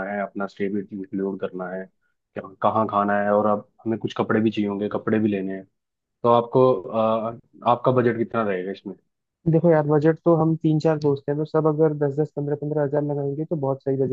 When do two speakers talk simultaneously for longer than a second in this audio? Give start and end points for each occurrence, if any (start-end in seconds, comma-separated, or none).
none